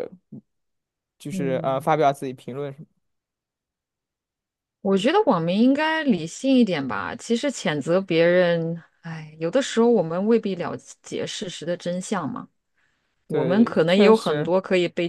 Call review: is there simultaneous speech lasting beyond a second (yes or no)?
yes